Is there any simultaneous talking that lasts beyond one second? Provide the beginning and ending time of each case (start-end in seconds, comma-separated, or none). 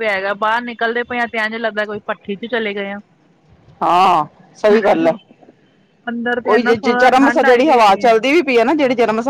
6.4-8.0